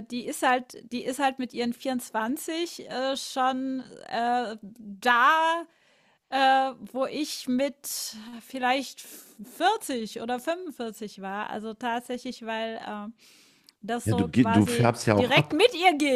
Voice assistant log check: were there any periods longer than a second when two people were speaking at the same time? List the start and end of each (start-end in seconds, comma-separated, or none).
14.0-15.6